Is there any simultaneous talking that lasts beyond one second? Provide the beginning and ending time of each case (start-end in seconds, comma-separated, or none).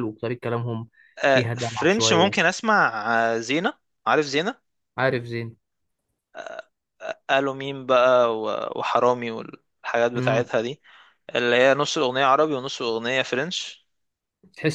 1.3-2.5